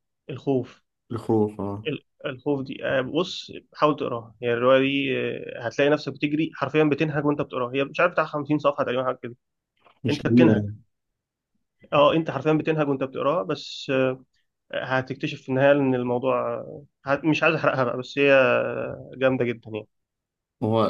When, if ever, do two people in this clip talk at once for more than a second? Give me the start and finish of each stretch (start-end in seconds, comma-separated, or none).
none